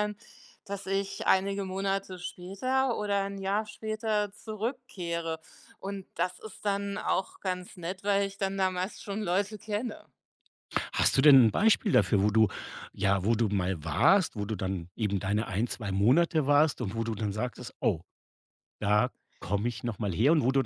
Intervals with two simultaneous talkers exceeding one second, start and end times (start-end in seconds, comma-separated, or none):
none